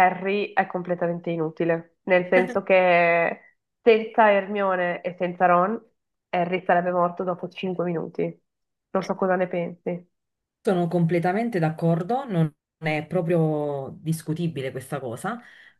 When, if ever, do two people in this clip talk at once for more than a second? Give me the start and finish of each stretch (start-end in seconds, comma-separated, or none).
none